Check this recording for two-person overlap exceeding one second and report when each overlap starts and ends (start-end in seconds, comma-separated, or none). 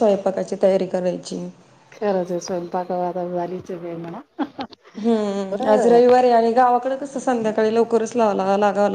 none